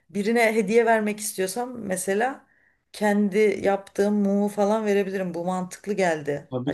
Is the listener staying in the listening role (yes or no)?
no